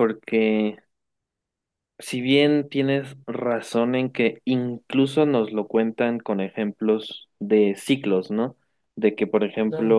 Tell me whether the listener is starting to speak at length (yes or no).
no